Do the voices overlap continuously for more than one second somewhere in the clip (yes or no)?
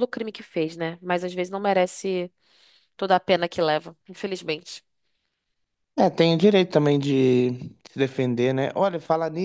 no